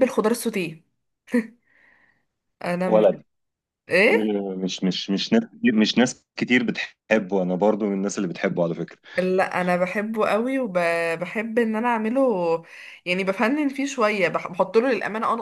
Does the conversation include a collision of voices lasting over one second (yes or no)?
no